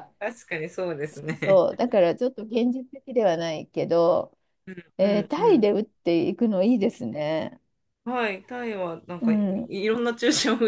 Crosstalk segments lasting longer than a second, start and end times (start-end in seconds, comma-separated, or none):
none